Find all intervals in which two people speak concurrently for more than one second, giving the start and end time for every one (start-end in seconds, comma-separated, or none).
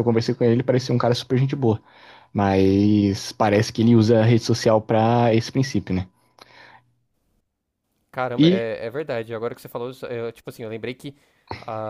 none